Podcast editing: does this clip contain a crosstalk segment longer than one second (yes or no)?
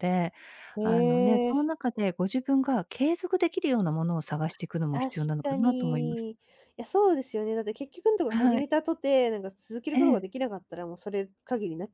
yes